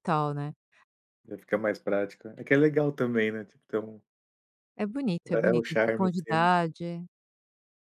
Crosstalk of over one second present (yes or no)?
yes